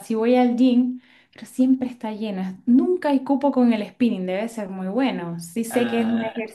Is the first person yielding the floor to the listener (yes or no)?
no